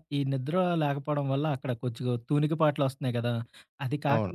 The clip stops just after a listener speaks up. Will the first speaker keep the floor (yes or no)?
yes